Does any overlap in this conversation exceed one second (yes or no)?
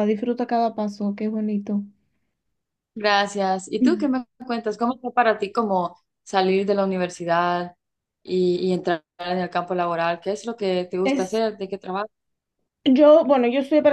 no